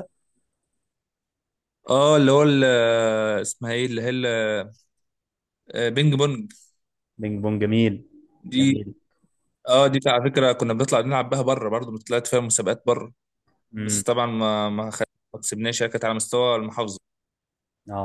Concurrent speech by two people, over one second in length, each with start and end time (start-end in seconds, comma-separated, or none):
none